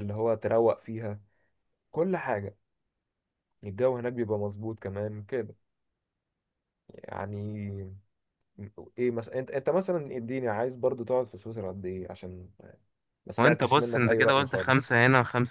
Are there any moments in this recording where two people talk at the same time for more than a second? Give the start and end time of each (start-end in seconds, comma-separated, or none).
13.4-14.9